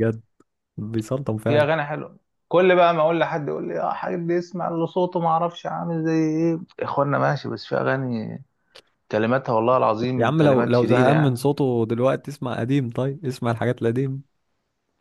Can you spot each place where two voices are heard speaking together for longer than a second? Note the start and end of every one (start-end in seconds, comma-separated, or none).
10.2-11.5